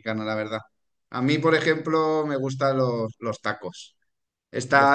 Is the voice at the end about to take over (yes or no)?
no